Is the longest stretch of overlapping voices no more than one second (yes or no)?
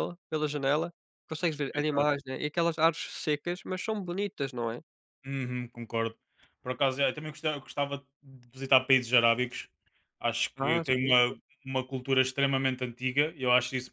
yes